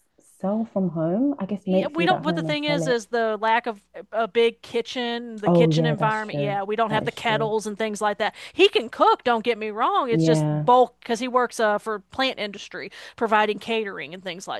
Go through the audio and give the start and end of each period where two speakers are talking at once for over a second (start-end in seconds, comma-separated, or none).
1.7-3.0, 5.5-7.5